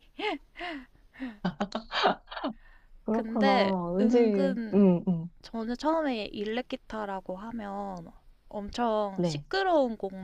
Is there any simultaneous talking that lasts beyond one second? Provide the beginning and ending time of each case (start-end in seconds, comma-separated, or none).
3.1-4.8